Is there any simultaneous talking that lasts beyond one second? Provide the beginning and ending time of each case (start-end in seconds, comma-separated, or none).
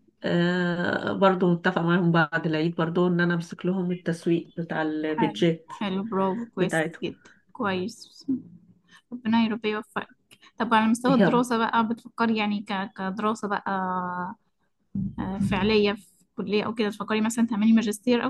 none